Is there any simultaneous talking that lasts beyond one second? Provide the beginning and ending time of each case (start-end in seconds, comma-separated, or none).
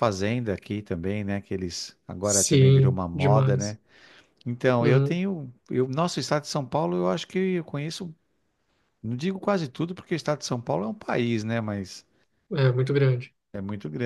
2.2-3.8